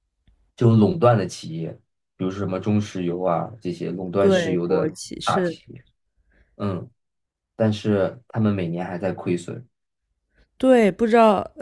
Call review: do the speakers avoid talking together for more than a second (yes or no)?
no